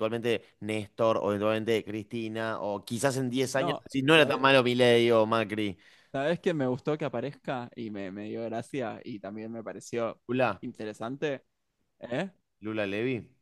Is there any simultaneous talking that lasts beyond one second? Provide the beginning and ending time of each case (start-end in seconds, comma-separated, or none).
none